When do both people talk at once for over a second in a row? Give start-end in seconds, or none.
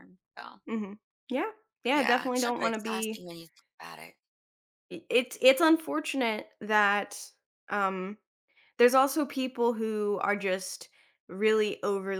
1.9-3.2